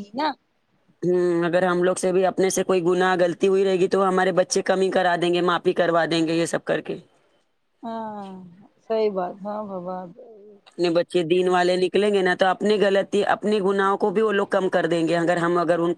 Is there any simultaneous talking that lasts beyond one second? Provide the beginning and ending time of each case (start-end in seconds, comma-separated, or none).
none